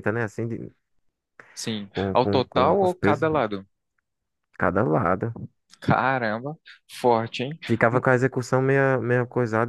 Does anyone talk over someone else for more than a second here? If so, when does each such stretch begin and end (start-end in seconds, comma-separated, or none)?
1.9-3.3